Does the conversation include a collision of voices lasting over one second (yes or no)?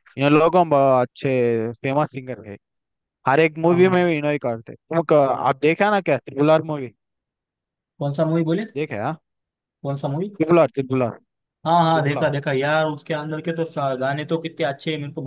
no